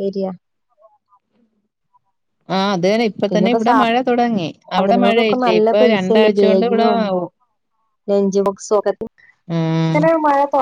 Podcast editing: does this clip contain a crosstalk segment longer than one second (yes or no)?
yes